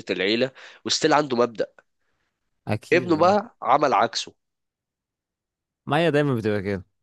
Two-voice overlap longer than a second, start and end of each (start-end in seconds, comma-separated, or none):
none